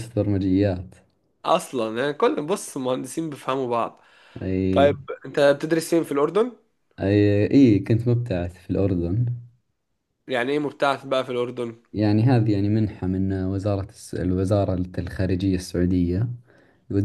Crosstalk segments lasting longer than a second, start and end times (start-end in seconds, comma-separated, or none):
none